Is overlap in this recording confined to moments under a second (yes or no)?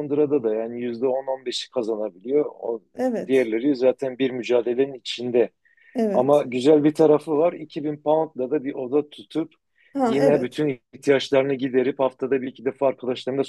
yes